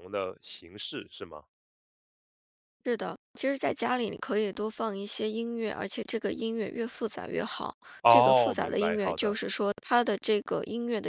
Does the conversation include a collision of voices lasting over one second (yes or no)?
yes